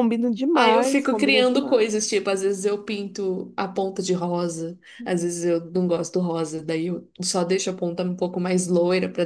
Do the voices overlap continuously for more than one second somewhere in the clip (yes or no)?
yes